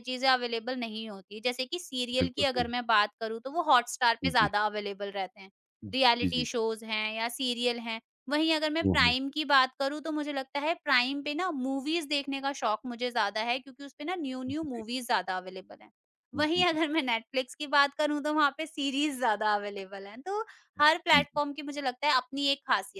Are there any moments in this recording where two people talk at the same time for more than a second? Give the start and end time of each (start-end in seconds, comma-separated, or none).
none